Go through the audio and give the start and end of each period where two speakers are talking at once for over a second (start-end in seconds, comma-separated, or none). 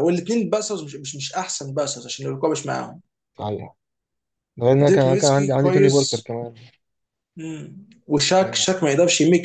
4.8-6.3